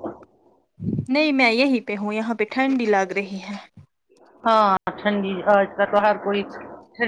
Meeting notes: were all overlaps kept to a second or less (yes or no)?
yes